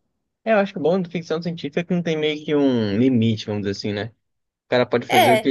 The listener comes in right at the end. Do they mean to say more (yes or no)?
no